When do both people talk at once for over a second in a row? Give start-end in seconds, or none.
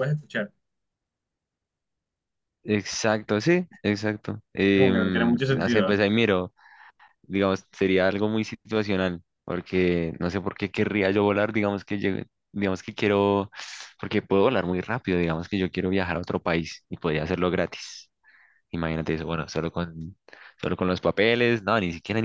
4.7-6.0